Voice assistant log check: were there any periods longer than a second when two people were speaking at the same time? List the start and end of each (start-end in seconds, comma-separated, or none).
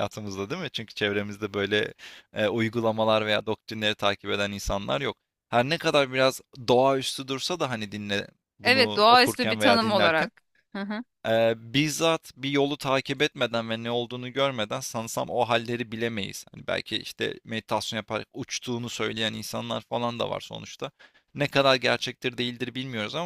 8.6-10.3